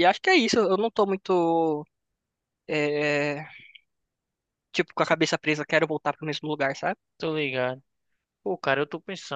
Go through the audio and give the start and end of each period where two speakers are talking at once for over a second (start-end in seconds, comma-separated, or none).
none